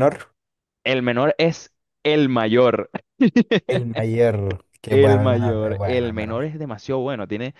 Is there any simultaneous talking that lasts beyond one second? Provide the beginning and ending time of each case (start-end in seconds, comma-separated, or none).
4.9-6.4